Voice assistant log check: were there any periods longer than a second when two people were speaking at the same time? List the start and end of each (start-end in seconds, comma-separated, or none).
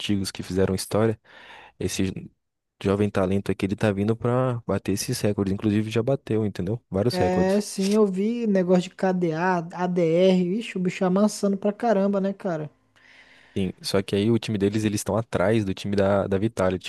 none